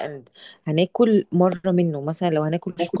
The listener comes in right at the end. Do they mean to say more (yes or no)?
no